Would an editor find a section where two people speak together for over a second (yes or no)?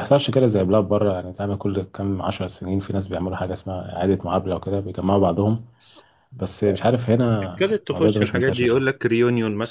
yes